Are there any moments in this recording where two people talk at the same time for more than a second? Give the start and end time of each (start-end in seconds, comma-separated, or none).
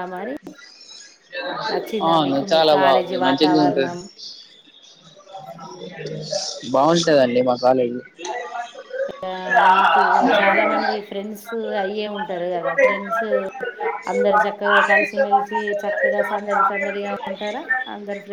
2.1-4.0